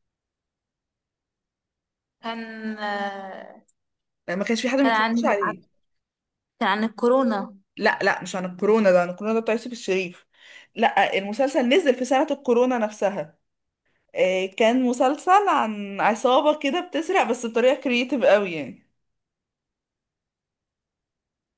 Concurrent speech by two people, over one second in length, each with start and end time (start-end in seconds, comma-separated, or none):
none